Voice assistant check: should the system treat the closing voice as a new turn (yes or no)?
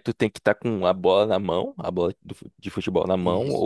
yes